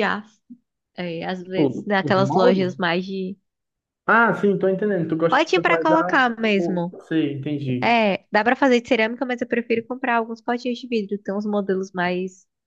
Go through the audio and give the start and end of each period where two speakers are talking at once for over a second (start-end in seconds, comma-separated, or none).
1.4-2.8, 5.3-7.0